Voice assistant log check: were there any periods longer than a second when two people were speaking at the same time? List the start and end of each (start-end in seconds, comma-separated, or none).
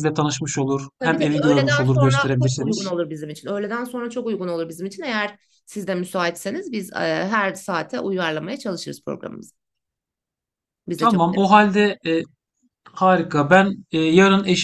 1.0-2.9